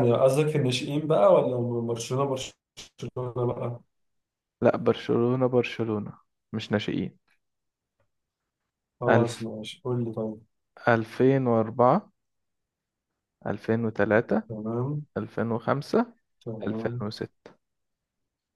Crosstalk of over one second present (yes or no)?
no